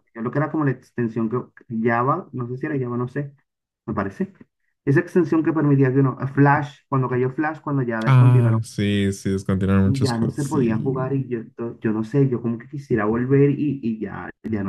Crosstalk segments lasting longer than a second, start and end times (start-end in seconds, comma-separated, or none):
9.8-11.3